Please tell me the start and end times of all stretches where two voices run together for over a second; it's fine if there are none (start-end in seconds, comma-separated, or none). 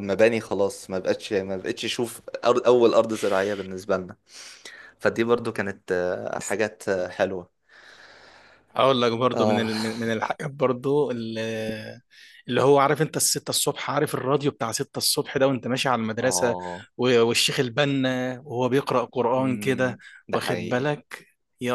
19.3-20.9